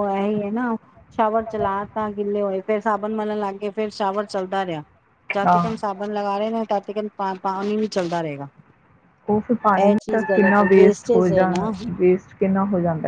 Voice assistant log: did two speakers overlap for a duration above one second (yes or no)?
yes